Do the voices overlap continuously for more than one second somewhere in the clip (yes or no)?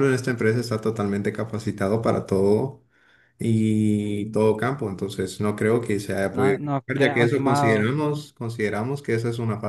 yes